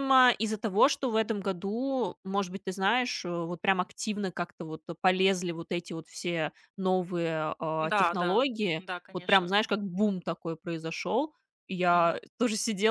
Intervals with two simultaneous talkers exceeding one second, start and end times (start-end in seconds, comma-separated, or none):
7.8-9.6